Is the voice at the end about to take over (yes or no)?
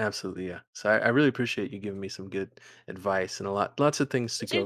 no